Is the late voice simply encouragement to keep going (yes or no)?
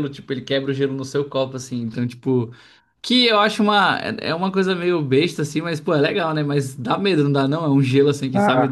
no